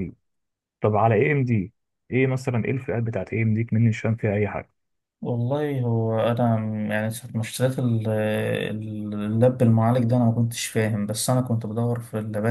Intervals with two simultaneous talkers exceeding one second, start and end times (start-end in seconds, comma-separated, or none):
none